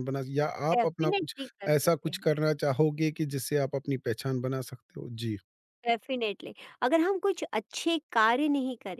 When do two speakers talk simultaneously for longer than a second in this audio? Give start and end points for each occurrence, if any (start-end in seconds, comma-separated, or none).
0.7-2.3